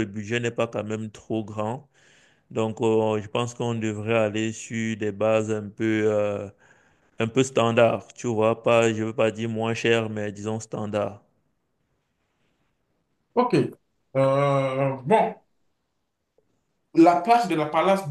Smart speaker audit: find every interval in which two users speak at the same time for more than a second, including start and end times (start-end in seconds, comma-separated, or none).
none